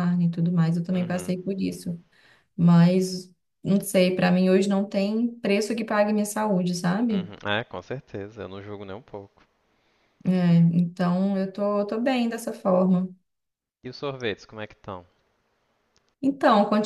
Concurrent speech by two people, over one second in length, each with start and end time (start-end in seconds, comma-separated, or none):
none